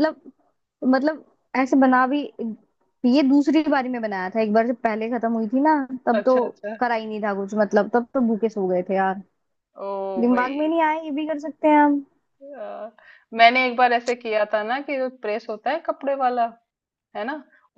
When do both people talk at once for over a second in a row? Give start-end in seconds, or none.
none